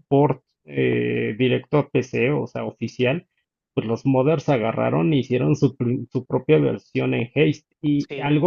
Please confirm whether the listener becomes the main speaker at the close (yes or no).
no